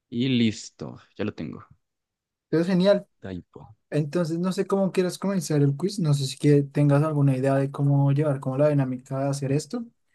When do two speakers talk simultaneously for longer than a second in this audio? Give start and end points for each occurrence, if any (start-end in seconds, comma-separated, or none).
none